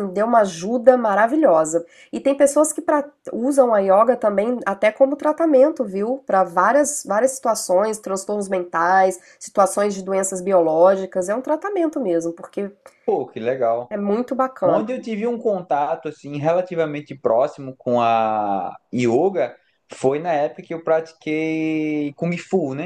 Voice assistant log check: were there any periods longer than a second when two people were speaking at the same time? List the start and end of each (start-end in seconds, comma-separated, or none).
none